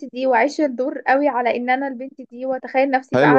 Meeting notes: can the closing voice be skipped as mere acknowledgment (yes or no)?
no